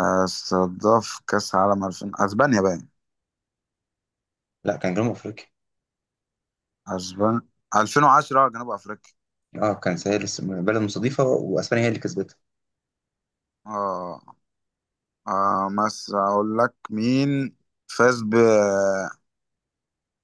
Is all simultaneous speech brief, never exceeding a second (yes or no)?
yes